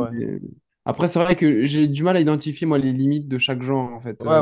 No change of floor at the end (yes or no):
no